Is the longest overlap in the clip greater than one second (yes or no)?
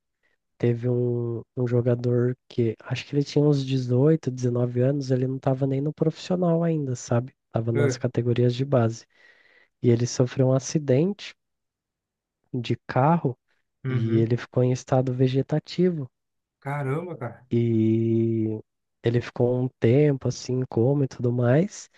no